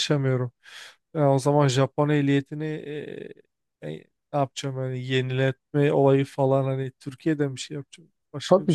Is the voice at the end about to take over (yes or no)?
yes